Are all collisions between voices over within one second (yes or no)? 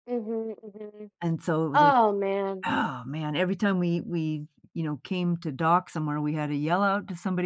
yes